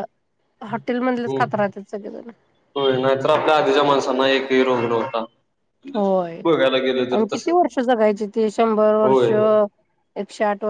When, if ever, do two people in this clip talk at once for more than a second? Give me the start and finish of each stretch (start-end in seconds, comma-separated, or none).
none